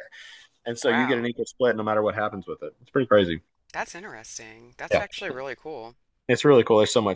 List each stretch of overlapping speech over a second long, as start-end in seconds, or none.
none